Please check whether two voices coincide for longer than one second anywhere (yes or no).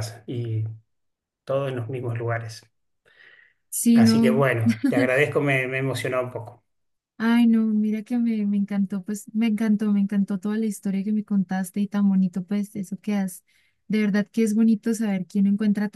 no